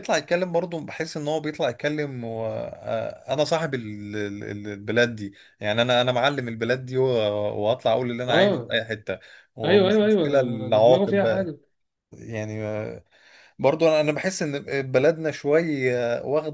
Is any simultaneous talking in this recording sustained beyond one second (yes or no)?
yes